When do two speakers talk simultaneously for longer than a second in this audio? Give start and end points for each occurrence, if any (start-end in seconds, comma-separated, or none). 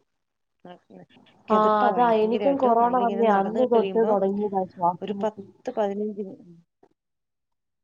1.6-4.2